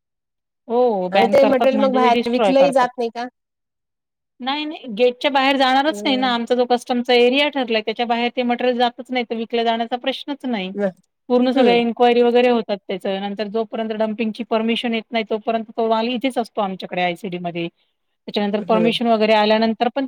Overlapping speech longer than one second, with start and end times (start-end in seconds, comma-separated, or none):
1.1-2.9